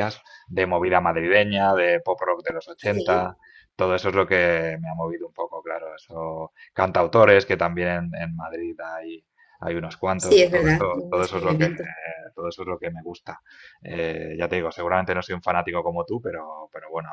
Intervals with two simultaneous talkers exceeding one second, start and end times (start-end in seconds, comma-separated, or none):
10.2-11.7